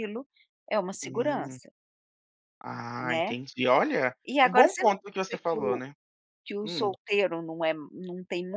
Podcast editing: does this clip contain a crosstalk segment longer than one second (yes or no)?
yes